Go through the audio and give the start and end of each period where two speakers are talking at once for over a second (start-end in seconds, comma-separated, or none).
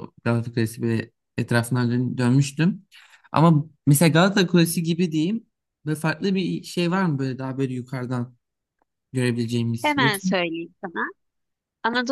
none